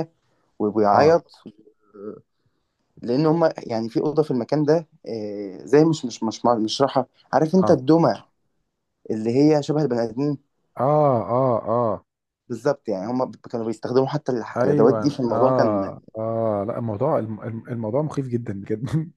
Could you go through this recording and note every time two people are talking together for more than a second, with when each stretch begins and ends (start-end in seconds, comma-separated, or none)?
14.6-15.9